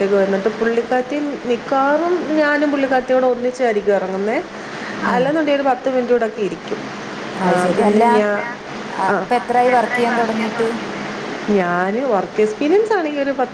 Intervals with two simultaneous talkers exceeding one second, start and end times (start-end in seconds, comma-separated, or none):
none